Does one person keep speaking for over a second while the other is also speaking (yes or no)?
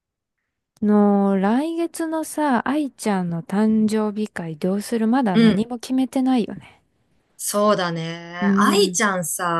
no